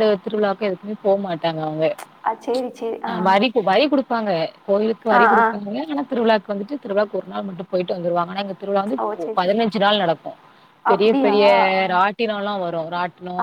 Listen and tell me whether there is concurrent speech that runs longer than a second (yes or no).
no